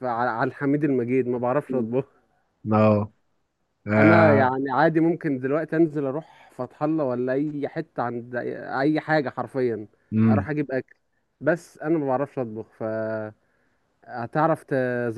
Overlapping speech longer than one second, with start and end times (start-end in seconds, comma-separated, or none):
none